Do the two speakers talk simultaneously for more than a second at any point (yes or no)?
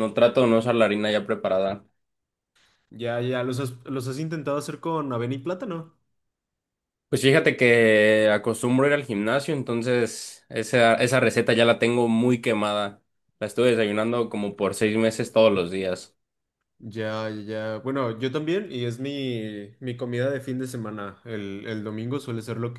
no